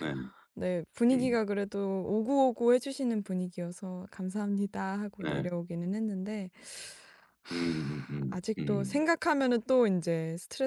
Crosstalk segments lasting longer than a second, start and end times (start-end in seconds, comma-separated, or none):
7.5-9.0